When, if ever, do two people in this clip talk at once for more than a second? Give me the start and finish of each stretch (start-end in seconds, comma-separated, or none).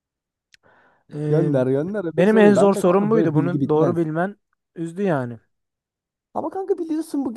2.1-4.1